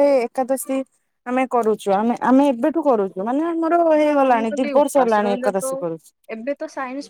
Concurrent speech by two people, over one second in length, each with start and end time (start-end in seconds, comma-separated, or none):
4.0-5.7